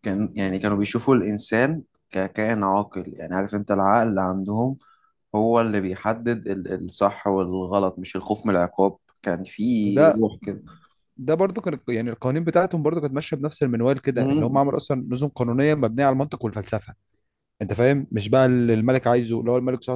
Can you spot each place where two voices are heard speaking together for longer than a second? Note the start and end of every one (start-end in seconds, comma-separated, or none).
none